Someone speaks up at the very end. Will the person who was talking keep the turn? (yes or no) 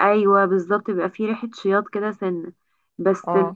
yes